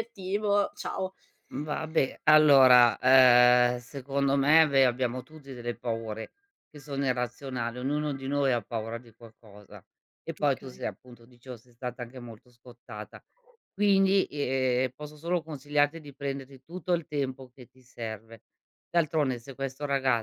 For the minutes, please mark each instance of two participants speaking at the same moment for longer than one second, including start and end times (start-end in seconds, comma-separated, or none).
none